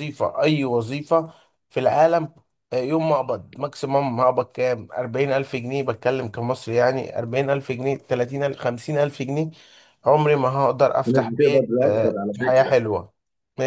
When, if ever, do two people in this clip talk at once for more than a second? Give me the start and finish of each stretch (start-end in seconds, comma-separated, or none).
11.0-12.7